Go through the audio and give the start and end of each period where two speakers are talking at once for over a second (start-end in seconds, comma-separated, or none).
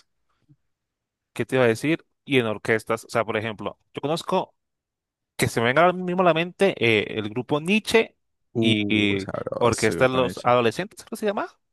8.6-10.5